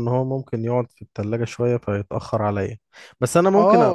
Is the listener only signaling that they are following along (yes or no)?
no